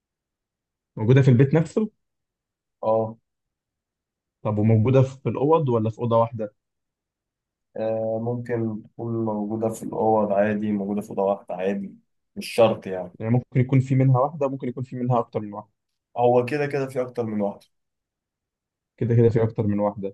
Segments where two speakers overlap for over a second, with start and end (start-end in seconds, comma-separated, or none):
none